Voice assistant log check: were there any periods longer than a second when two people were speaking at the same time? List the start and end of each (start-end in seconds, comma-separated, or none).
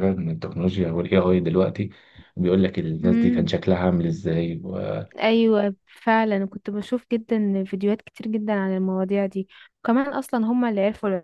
none